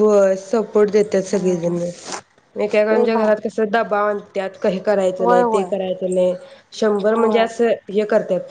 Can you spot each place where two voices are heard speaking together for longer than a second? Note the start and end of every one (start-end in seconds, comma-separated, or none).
none